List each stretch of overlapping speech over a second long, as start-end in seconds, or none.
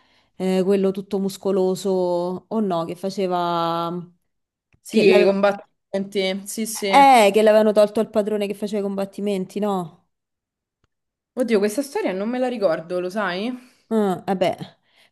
none